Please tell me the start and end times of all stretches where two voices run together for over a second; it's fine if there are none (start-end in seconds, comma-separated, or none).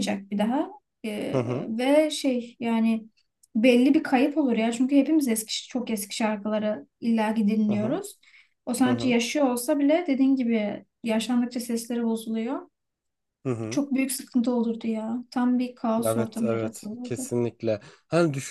16.0-17.3